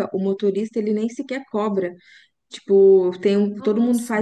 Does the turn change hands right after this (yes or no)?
no